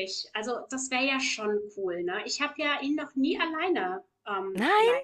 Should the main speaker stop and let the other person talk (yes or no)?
no